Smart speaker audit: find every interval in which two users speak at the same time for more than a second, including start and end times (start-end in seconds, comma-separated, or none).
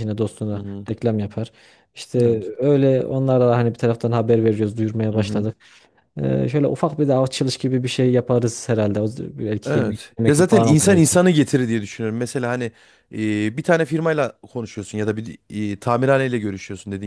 9.6-11.2